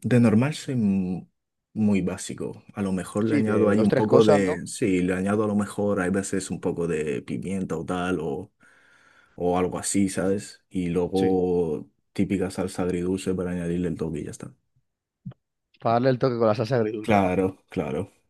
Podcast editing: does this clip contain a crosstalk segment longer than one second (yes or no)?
yes